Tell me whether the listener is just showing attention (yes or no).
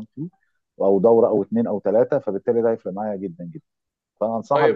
no